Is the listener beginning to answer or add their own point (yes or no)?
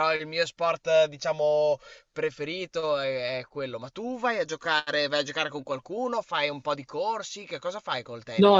yes